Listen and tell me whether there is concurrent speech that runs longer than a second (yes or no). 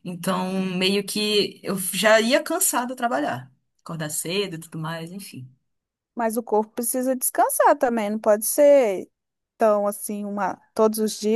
no